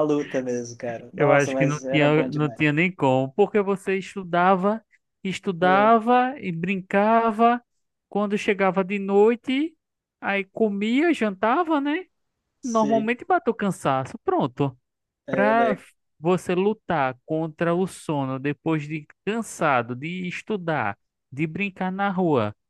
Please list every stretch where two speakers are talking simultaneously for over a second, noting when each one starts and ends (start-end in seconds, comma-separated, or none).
1.1-2.6